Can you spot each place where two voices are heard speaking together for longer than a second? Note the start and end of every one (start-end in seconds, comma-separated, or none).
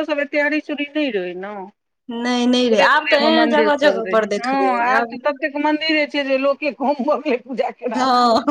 2.7-5.2